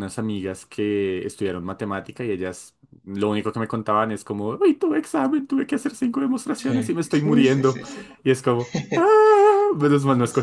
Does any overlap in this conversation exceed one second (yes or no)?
yes